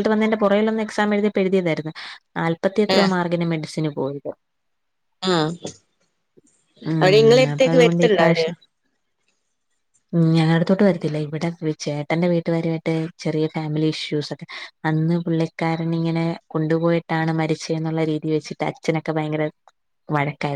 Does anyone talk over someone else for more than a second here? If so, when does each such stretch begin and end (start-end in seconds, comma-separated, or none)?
7.0-8.4